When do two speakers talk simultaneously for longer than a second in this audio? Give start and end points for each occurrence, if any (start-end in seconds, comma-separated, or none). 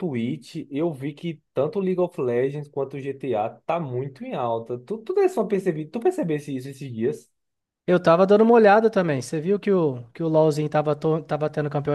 none